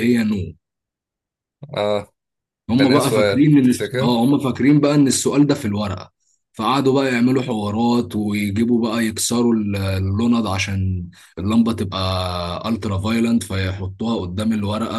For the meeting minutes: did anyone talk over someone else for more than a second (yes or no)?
yes